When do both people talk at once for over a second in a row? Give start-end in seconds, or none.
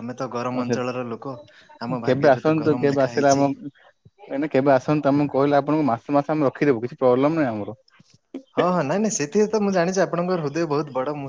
2.1-3.4